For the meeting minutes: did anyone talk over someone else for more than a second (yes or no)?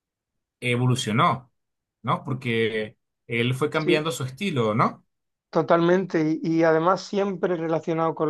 no